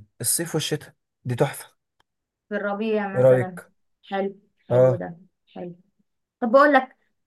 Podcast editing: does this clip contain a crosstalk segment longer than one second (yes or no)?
no